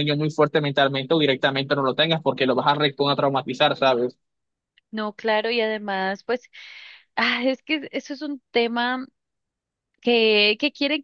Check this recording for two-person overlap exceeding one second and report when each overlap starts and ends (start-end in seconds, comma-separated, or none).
none